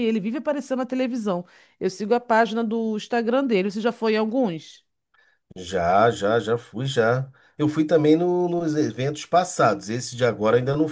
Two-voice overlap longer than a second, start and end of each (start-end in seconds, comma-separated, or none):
none